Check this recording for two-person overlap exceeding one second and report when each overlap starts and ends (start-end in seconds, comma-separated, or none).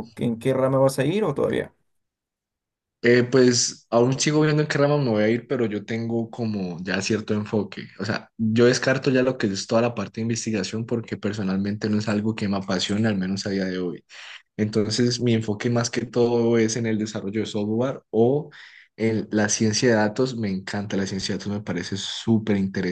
none